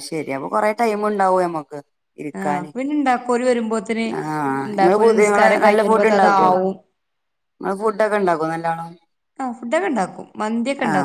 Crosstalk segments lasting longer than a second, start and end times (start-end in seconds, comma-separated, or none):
4.8-6.5